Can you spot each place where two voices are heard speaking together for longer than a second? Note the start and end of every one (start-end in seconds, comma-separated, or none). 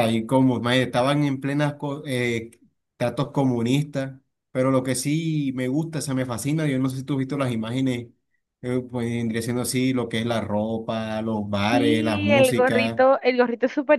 11.7-13.0